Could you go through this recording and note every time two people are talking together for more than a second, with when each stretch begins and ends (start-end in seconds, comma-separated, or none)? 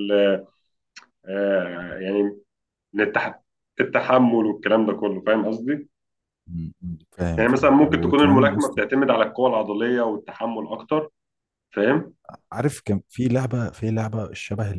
7.4-8.8